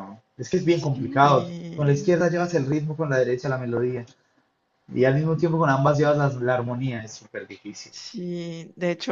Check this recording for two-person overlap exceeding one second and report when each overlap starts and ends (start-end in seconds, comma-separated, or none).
0.7-2.1